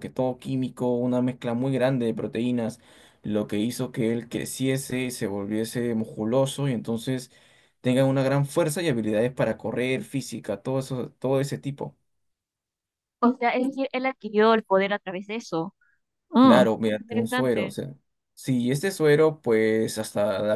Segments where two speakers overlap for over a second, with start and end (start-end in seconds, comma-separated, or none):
16.4-17.8